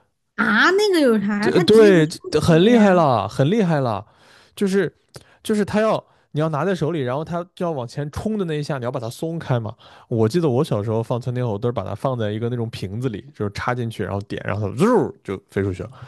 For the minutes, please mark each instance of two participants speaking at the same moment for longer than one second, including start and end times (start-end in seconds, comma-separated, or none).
1.4-3.0